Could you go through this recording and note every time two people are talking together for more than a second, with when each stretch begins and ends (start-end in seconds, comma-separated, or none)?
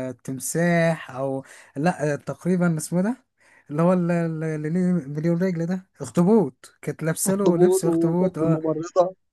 7.3-8.6